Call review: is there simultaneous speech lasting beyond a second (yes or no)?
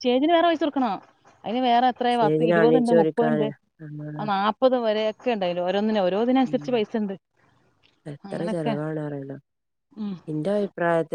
yes